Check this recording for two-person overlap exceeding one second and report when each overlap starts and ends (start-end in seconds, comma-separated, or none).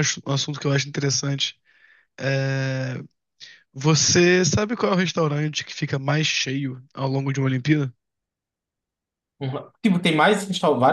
none